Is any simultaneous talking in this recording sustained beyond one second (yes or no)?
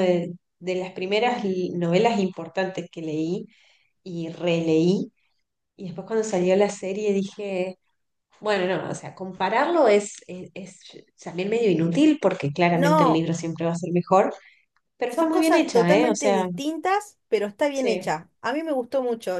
yes